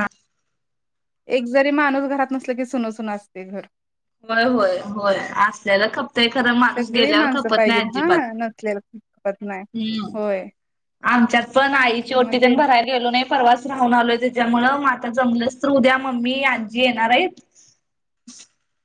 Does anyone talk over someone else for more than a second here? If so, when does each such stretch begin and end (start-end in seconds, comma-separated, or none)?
6.8-8.2